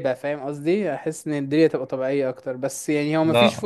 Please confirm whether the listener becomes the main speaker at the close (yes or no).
no